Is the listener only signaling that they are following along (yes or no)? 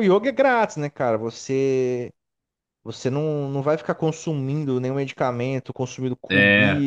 yes